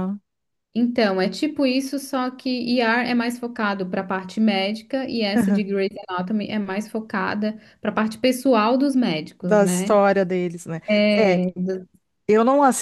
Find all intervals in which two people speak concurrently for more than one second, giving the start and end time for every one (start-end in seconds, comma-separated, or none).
none